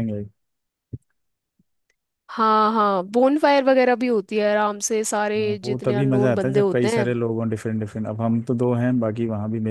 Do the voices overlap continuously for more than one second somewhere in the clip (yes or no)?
yes